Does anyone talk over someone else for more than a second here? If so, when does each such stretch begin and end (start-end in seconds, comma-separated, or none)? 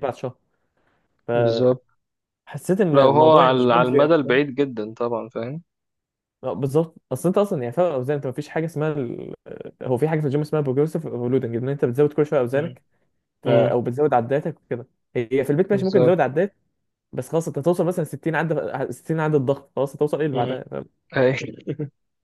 2.9-4.4